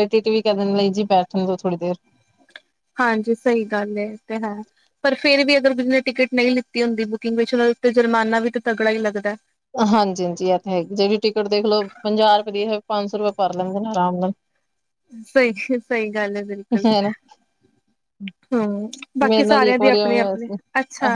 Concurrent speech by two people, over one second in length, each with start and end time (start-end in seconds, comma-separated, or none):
19.3-20.6